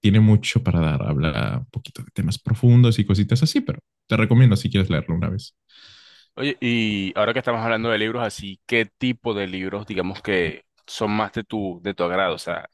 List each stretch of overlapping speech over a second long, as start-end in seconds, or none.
none